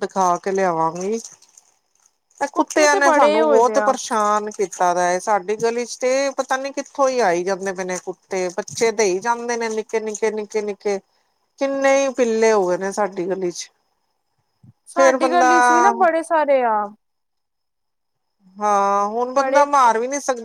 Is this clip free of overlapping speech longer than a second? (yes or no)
no